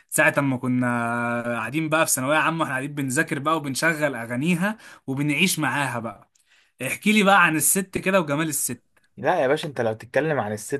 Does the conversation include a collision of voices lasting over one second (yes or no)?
no